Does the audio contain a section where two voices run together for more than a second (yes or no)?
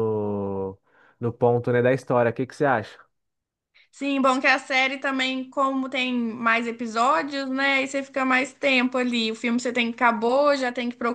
no